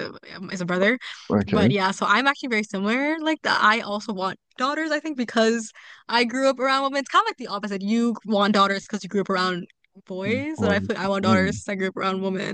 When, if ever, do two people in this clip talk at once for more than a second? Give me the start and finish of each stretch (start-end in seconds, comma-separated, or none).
10.2-11.6